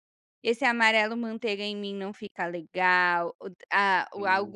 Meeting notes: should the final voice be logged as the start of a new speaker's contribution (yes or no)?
no